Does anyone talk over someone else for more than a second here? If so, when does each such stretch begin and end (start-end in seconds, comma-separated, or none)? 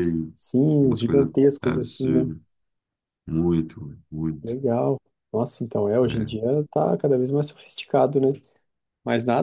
0.8-2.3